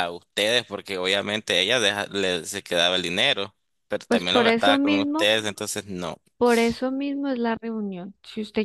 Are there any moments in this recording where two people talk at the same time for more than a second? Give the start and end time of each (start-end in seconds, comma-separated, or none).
4.1-5.3